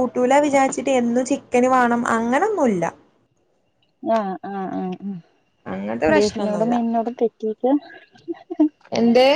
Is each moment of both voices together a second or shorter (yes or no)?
yes